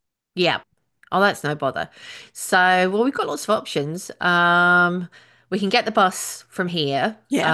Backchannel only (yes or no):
yes